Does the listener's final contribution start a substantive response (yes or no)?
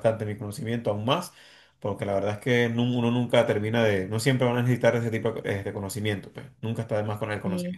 yes